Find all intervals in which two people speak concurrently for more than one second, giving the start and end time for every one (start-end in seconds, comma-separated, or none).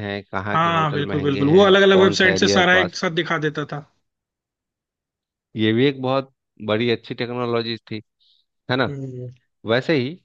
0.5-3.0